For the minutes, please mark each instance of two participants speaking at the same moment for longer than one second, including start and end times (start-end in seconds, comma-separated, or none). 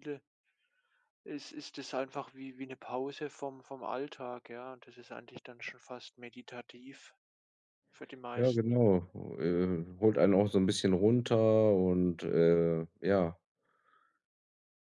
none